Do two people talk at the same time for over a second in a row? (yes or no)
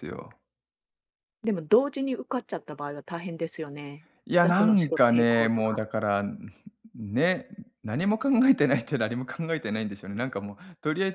yes